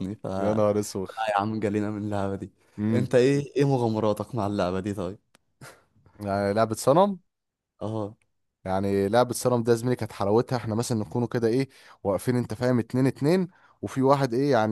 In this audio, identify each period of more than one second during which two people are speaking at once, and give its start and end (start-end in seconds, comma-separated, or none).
none